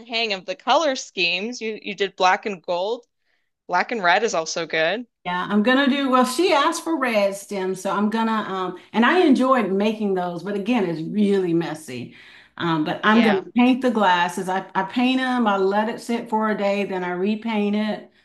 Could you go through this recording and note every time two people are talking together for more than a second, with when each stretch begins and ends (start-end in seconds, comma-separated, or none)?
none